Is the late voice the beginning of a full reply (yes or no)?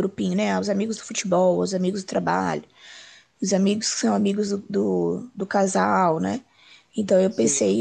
no